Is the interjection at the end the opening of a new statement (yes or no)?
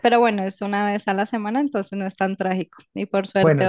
no